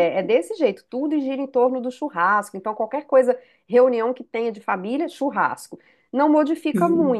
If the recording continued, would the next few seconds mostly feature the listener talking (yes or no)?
no